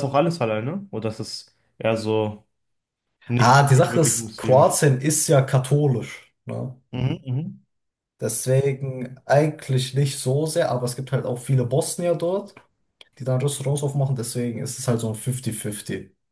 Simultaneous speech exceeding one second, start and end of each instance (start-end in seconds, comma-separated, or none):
3.4-4.8